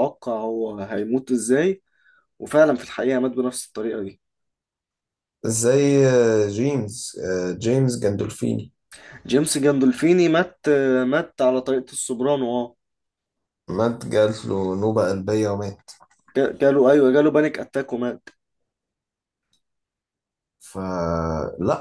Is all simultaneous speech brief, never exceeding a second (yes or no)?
yes